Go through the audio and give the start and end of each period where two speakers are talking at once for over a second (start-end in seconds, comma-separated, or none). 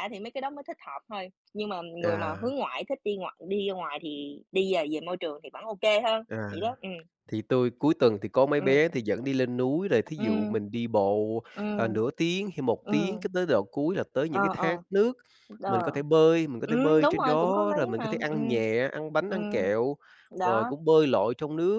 16.6-18.6